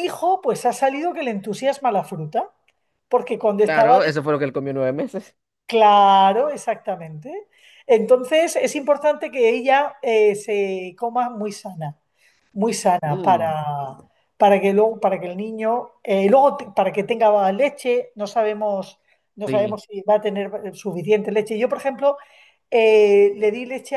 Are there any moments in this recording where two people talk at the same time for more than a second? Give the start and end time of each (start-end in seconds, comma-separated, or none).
none